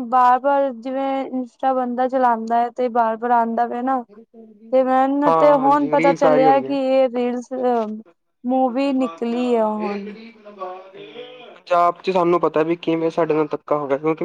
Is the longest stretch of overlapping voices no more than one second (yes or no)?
no